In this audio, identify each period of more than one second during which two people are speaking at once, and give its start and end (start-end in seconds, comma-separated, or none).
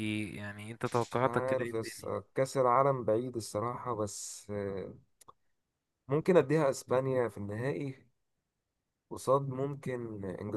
0.9-2.1